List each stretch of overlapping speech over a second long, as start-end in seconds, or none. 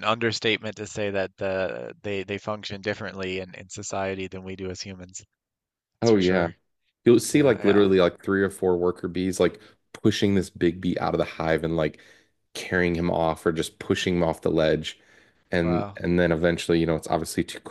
none